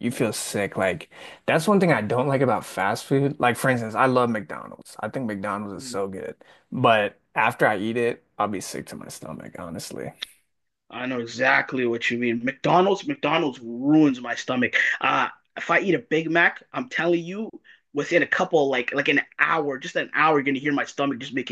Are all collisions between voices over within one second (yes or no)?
yes